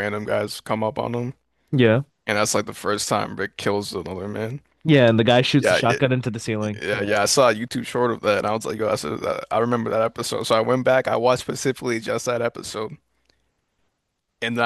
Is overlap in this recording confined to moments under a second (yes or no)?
yes